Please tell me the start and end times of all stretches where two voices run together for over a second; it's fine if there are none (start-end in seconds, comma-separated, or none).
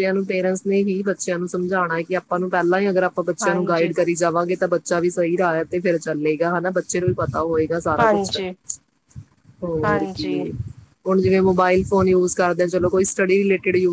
none